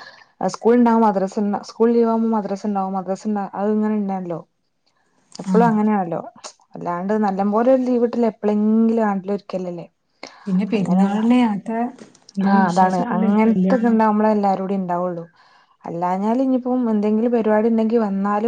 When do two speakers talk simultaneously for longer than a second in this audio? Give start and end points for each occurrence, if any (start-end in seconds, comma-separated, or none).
12.5-14.0